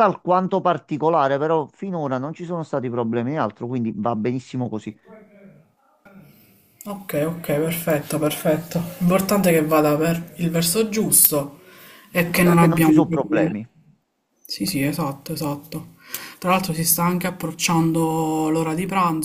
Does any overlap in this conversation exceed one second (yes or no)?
yes